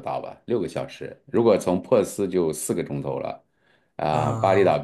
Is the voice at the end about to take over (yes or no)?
no